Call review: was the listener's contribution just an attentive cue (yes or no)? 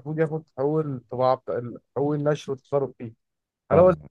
yes